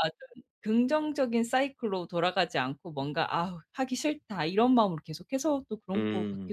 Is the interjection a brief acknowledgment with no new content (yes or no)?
no